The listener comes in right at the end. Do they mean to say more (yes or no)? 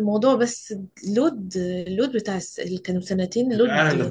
yes